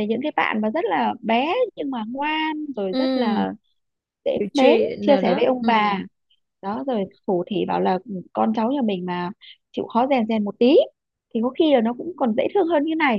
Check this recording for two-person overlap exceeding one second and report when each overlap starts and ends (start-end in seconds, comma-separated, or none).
4.4-6.0